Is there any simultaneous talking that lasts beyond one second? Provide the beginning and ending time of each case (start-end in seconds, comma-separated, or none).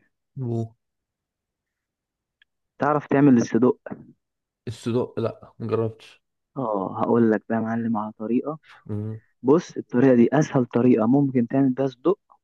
none